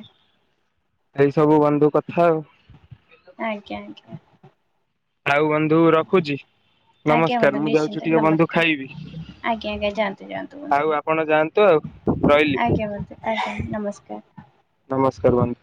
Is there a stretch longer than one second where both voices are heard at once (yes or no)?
yes